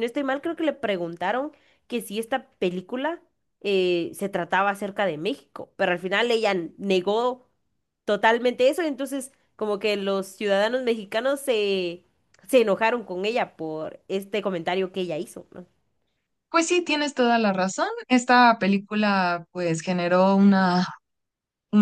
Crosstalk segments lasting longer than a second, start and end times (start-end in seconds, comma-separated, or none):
none